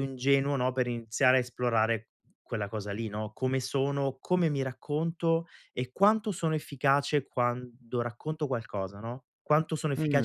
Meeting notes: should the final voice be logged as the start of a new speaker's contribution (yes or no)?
yes